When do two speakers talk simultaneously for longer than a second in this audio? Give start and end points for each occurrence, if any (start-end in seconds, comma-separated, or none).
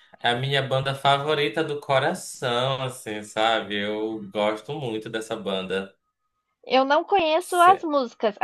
none